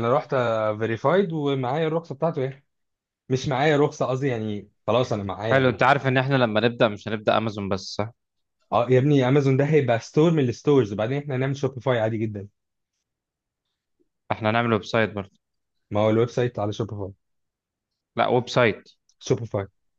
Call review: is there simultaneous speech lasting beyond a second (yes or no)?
no